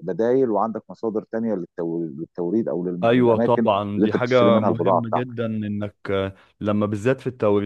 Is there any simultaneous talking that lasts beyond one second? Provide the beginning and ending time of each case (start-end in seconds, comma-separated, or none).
3.0-5.4